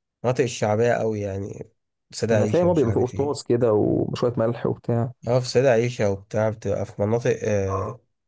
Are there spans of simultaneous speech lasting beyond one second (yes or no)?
yes